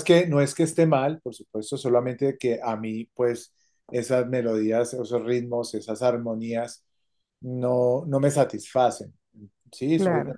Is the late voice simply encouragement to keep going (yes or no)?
yes